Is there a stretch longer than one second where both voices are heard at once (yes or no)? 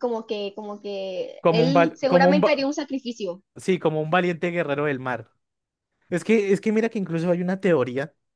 yes